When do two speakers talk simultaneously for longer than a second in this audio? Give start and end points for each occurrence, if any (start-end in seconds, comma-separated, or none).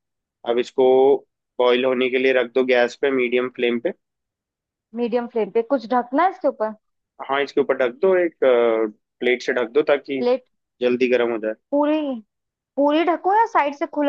none